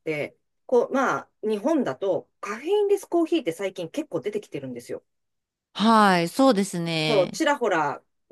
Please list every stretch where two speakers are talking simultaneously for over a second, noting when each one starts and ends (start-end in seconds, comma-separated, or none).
none